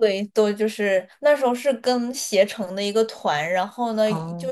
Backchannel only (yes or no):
yes